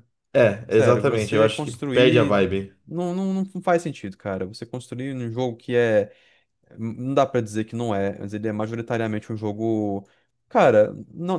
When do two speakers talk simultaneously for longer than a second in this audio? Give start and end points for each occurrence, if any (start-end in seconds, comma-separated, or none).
0.7-2.4